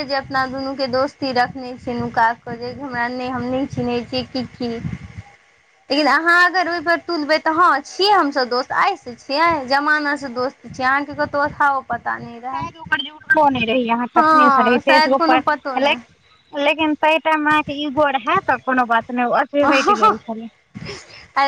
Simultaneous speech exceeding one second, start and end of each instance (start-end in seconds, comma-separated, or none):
14.2-16.0